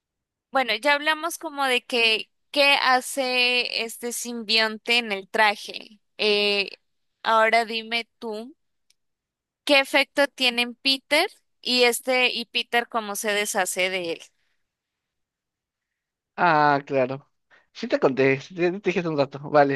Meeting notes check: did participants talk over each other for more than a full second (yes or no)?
no